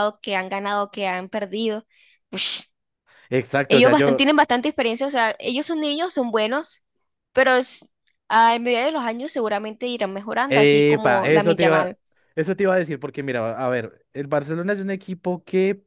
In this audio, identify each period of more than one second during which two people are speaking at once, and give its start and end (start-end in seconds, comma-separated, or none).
10.5-11.9